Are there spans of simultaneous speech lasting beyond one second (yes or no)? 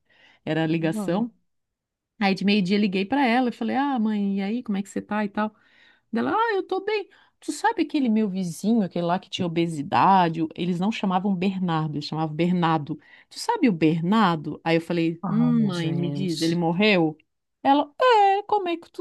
yes